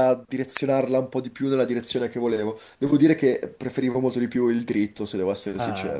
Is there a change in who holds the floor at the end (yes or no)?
yes